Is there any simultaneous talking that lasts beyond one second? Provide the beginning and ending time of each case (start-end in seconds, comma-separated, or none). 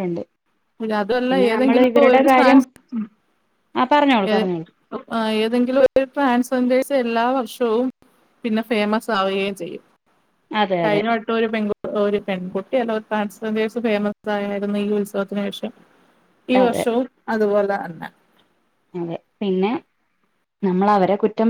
none